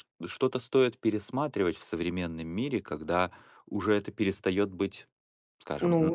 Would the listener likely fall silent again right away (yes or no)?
no